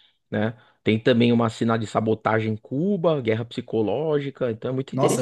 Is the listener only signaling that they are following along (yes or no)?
no